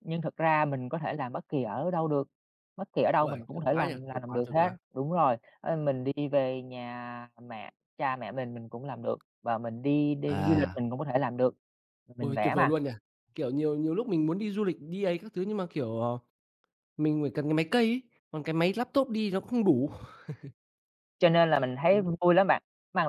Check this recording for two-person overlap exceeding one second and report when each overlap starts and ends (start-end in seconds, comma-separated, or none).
3.2-4.8